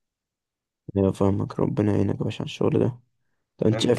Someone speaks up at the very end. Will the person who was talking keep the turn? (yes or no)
yes